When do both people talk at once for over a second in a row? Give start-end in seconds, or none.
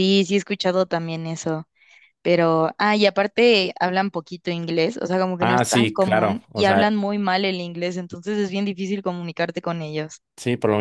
5.4-7.0